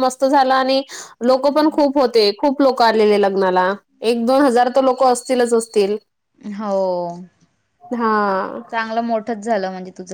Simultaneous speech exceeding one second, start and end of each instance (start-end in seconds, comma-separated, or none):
none